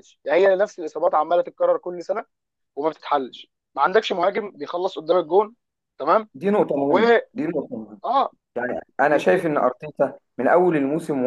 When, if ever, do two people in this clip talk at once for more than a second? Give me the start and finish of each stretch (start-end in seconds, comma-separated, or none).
none